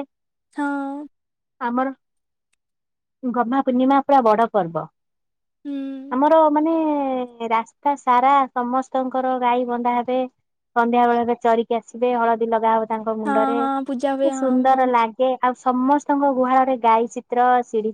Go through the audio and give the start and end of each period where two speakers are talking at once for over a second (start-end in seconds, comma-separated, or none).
13.3-15.1